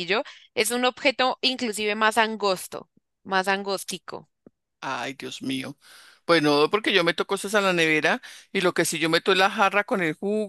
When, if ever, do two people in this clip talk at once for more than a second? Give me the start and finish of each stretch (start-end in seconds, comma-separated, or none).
none